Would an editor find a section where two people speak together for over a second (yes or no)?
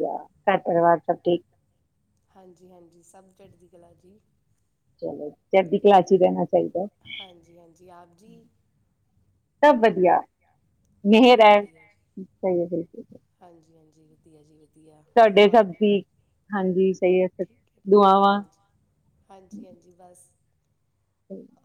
no